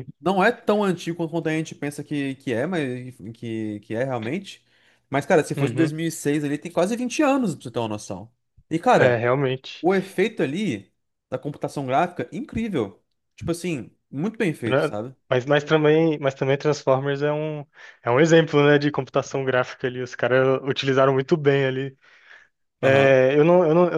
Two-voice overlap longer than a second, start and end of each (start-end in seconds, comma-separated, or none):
none